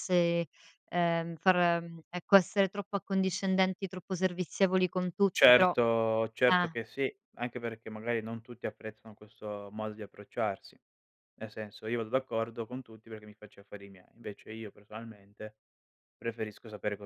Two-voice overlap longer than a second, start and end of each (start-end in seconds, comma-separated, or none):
none